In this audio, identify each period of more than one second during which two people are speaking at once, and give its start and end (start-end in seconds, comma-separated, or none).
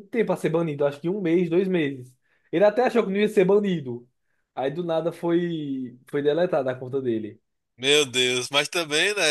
none